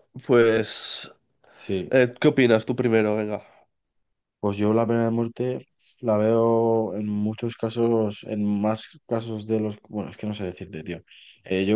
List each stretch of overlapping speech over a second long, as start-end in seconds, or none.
none